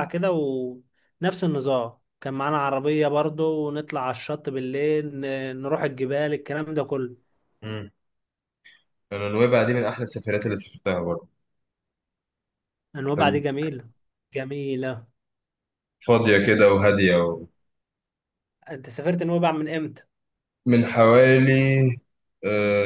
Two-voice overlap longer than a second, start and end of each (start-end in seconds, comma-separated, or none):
none